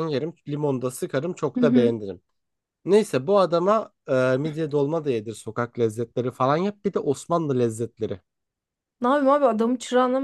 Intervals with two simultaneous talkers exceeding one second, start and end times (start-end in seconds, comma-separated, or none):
none